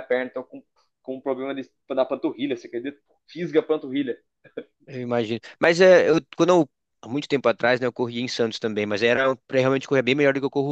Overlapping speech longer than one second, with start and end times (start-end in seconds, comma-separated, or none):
none